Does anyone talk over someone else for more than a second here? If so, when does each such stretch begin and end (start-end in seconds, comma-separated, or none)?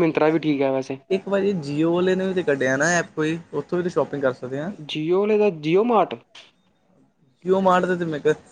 none